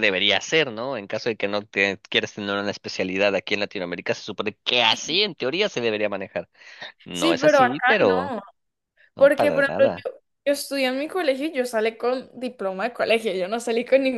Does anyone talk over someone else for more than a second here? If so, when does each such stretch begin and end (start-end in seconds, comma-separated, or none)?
7.1-8.4